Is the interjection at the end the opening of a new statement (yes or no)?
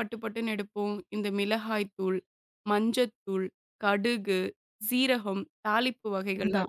yes